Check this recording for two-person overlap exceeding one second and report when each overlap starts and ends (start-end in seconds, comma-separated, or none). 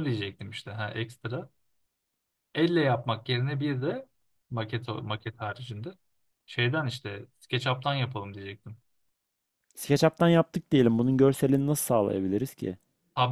none